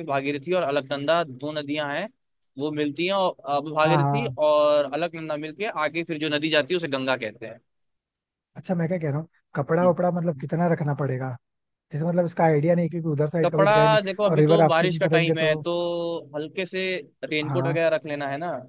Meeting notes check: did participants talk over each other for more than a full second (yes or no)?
yes